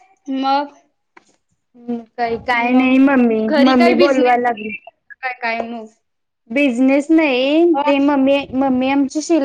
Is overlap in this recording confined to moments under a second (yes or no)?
no